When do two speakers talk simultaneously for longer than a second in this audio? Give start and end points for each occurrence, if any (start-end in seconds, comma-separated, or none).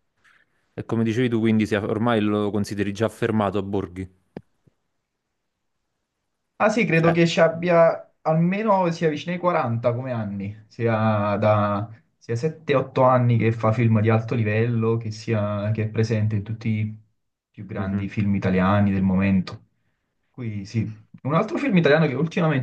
none